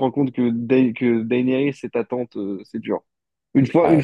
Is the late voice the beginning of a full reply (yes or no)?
no